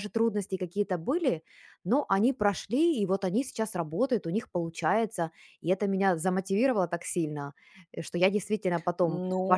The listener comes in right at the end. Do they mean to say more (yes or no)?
yes